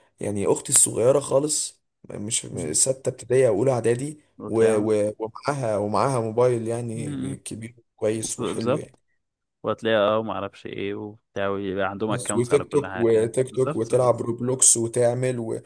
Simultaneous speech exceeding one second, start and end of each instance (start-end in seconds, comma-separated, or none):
12.1-14.3